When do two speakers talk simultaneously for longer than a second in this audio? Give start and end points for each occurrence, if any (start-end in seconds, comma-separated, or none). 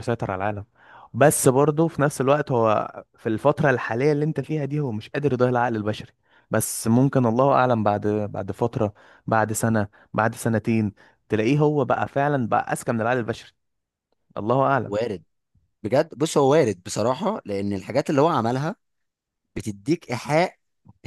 none